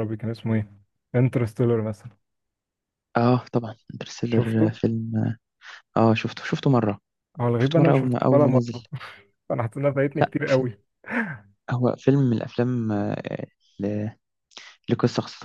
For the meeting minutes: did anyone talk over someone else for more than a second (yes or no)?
yes